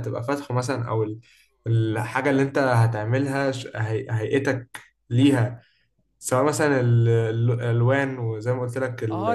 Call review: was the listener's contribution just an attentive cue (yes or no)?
no